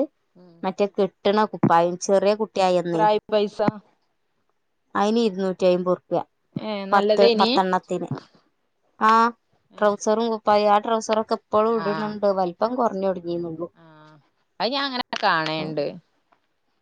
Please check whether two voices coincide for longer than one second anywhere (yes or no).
no